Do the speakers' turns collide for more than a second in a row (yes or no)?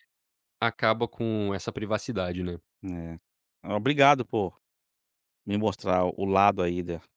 no